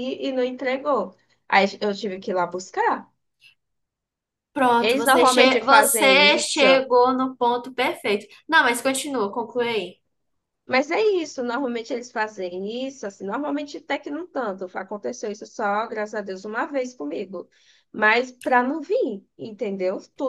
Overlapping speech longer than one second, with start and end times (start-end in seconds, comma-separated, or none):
4.8-6.6